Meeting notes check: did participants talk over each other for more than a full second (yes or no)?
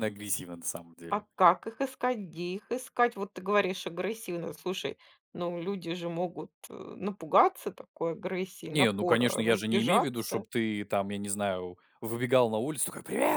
yes